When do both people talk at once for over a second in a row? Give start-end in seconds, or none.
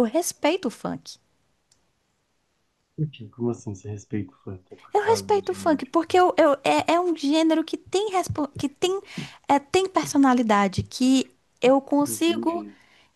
4.9-6.2